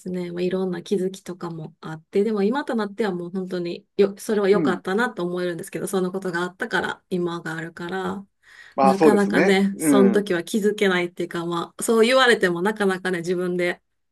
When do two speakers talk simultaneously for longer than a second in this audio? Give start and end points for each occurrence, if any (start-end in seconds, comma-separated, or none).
8.8-10.3